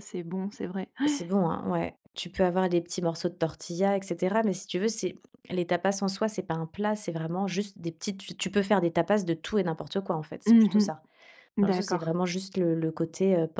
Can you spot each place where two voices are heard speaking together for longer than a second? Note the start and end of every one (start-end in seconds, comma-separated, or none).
none